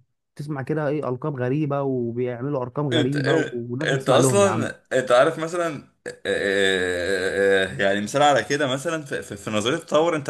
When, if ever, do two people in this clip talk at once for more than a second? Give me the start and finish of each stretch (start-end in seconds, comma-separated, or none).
2.9-4.7